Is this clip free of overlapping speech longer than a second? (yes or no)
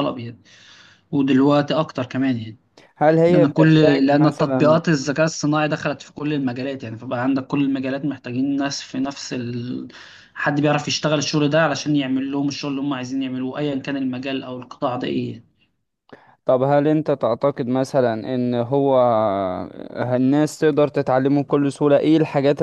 no